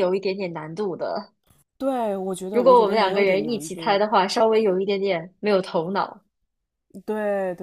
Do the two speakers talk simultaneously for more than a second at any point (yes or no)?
yes